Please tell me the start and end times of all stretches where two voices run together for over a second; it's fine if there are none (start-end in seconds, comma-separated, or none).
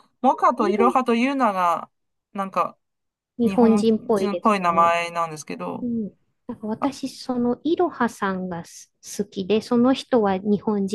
3.4-5.0